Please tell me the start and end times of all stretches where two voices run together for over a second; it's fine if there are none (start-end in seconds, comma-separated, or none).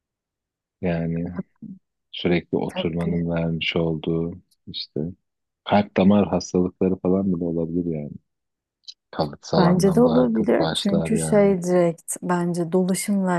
9.6-11.6